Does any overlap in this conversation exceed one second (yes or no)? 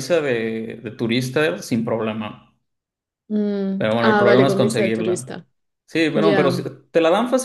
yes